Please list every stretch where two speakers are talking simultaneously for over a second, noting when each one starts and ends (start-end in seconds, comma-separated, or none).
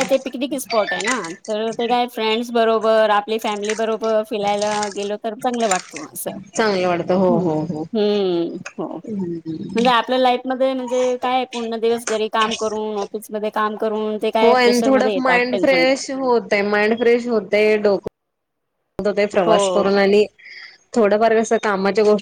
14.4-15.8